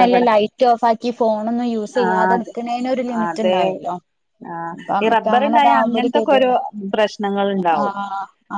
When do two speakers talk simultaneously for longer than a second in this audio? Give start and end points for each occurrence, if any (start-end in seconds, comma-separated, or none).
none